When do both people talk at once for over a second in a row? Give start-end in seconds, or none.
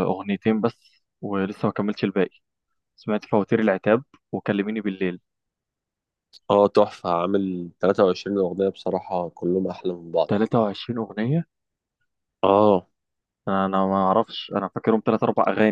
none